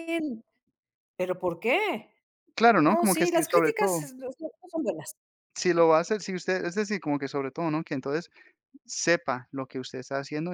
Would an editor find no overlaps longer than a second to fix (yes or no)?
no